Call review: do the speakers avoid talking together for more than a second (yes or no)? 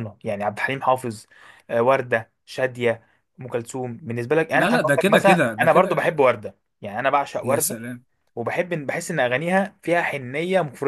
no